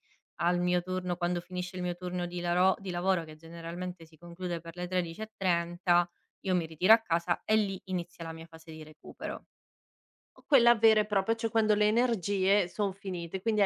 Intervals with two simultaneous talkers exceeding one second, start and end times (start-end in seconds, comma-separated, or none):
none